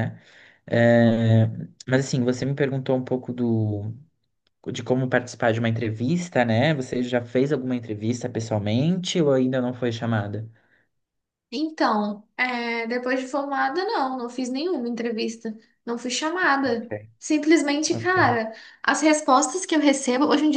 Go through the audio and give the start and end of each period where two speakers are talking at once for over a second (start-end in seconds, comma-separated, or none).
none